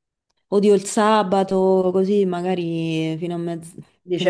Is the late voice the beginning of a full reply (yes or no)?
yes